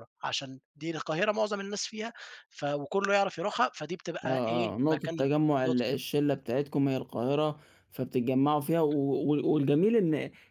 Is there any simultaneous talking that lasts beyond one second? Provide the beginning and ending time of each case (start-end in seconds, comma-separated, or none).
4.2-6.0